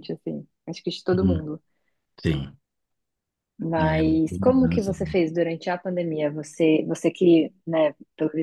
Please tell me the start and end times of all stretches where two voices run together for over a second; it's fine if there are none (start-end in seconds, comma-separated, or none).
3.8-5.2